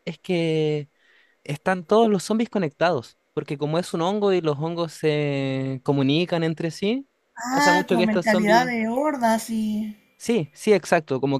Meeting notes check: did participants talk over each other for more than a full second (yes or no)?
yes